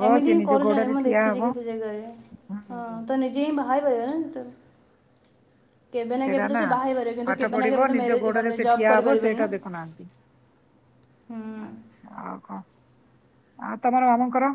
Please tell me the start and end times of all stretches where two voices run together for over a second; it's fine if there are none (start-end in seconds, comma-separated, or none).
7.3-9.5